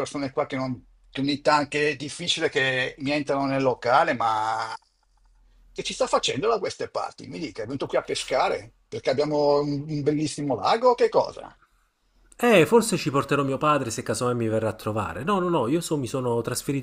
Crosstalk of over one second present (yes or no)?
no